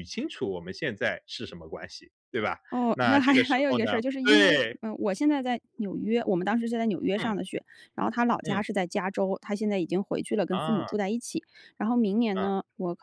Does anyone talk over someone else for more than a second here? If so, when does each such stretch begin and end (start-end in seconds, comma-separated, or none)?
2.9-4.6